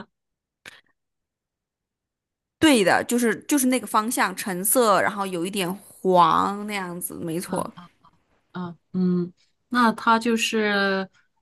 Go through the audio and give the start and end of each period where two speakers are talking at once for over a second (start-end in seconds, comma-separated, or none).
none